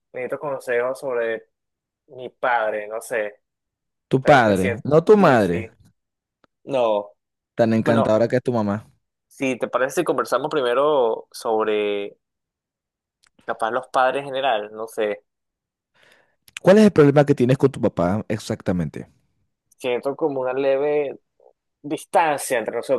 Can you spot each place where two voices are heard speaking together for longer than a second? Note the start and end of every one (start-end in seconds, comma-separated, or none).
4.2-5.7